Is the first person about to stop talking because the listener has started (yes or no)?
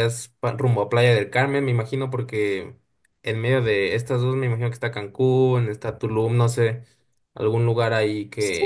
yes